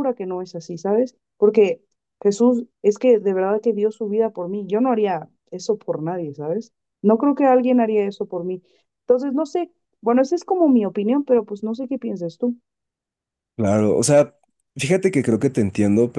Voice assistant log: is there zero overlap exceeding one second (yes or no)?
yes